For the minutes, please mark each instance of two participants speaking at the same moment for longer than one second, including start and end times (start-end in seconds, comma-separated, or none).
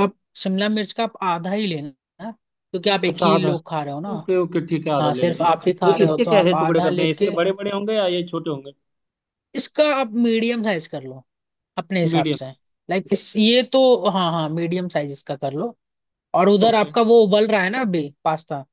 5.0-7.3